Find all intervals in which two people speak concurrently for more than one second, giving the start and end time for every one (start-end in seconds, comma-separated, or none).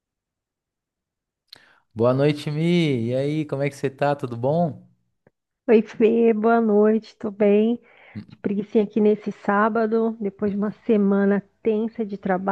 none